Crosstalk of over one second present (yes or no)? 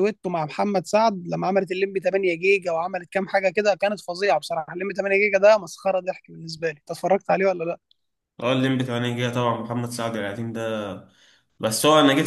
no